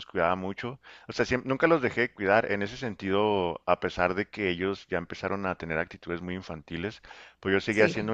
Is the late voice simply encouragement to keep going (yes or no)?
yes